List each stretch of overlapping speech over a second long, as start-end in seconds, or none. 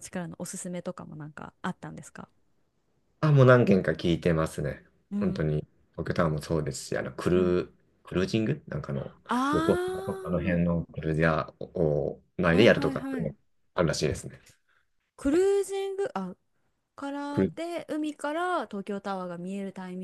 none